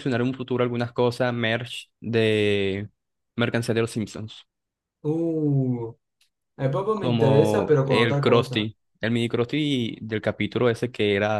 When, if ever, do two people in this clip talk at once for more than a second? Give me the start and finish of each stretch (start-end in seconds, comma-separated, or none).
6.9-8.7